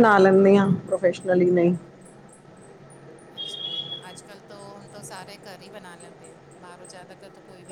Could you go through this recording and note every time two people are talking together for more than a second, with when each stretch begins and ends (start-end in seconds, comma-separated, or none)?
none